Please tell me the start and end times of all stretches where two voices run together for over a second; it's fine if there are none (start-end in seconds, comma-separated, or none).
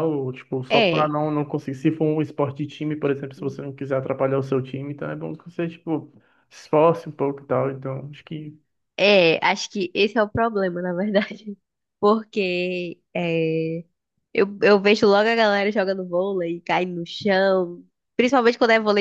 none